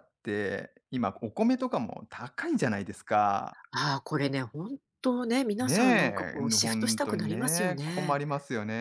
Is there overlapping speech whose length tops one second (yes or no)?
yes